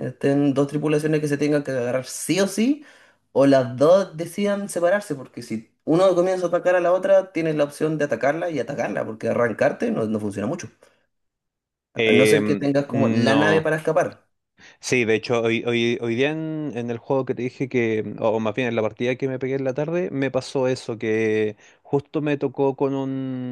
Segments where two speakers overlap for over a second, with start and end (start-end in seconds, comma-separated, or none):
12.1-13.7